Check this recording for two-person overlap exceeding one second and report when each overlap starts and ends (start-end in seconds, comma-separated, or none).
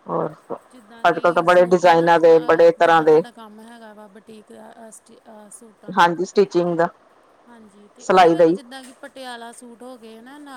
1.1-3.2